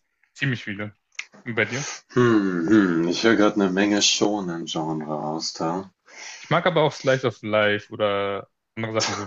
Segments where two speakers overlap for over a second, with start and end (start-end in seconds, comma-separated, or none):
none